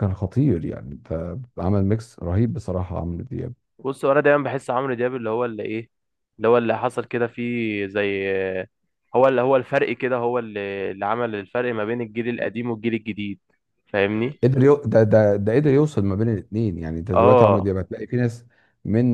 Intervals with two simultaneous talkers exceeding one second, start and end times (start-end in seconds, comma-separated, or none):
none